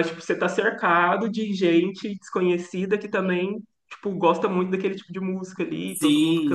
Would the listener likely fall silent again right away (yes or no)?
no